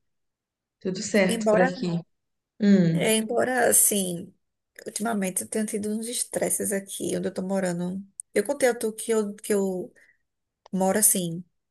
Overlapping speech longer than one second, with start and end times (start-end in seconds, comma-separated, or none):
none